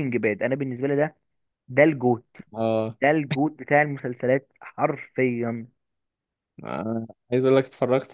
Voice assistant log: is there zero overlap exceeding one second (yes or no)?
yes